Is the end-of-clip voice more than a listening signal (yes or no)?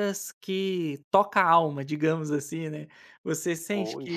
no